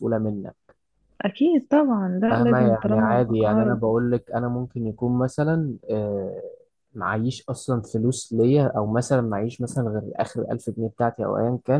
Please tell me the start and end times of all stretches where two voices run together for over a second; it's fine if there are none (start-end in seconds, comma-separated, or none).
2.3-3.8